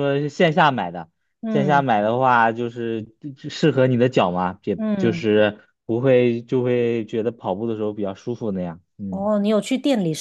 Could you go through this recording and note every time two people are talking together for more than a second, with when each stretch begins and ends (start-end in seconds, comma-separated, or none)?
none